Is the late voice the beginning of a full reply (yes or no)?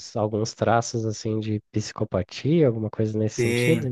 yes